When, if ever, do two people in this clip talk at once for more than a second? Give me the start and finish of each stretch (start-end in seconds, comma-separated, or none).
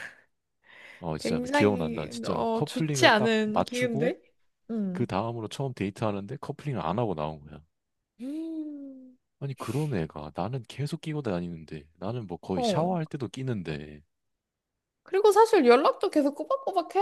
1.2-4.1